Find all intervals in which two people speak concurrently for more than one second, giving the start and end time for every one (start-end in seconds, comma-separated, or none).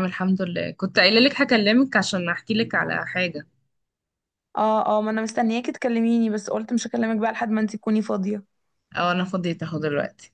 none